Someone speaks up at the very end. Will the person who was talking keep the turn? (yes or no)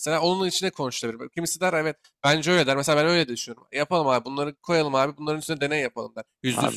yes